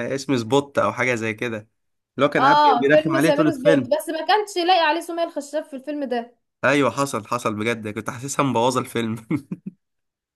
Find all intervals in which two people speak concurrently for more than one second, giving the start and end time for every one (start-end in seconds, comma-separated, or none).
2.4-3.9